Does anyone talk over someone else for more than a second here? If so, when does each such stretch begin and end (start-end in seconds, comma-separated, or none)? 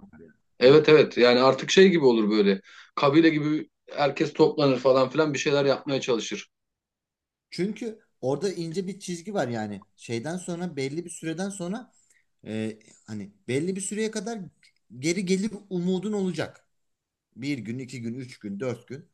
none